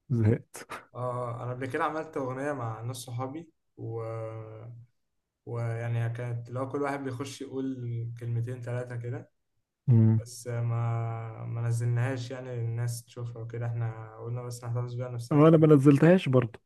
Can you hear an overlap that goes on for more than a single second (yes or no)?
no